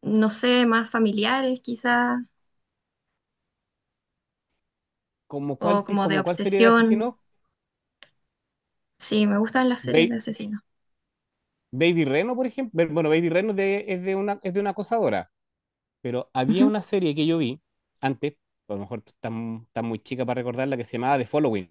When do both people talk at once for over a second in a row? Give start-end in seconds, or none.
5.6-6.8